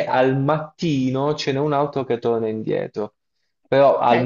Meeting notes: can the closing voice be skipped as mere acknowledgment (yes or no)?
no